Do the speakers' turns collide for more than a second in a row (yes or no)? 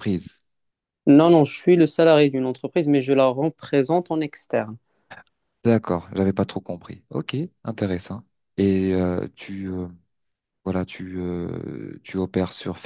no